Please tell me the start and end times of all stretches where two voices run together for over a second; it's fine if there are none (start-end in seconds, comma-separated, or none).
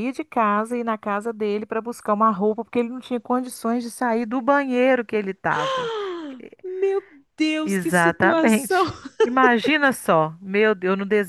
7.6-8.8